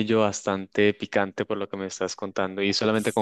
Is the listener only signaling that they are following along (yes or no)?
yes